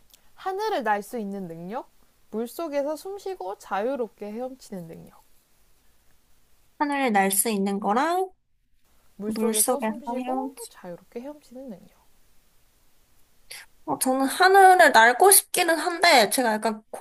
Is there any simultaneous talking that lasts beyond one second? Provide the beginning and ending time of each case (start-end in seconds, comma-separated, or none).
9.3-10.7